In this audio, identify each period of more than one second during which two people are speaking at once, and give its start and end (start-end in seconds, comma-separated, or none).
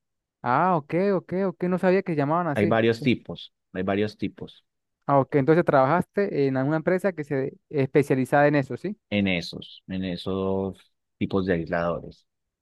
none